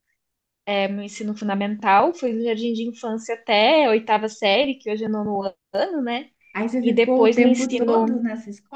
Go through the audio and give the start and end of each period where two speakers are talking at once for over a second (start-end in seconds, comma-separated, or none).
6.8-8.2